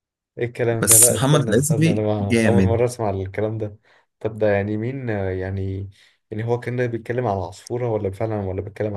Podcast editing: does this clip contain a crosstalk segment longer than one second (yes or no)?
yes